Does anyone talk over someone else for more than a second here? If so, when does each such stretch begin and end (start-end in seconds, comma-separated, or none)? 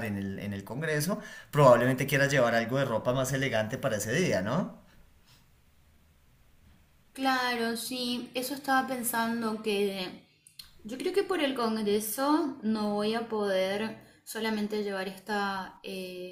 none